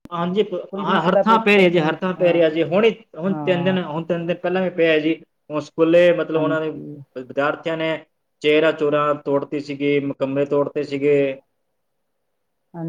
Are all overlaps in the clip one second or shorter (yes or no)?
no